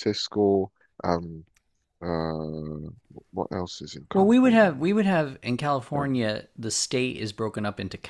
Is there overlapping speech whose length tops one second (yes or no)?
no